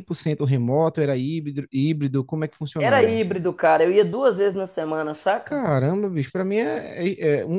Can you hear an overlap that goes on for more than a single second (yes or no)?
no